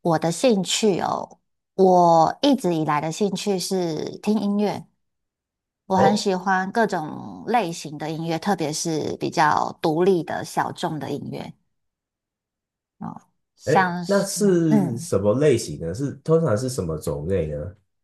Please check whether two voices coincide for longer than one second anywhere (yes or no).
yes